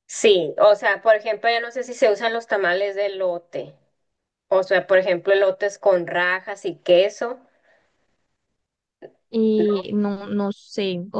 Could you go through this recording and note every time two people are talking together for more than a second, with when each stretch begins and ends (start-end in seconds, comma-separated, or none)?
none